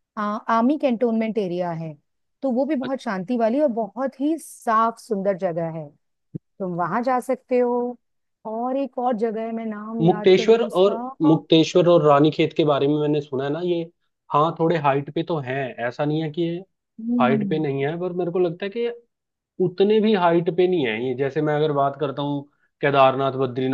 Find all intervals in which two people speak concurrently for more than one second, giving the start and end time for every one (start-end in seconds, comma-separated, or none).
10.0-11.3